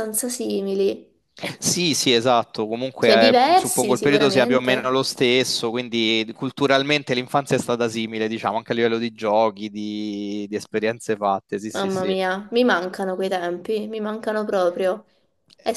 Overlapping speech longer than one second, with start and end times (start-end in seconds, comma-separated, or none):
3.0-5.0